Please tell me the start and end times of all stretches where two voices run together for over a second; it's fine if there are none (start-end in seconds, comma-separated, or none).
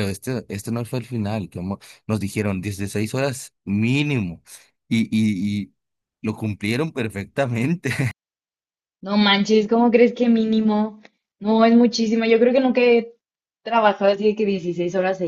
none